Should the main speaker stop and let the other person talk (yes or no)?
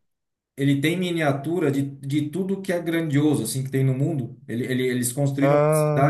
no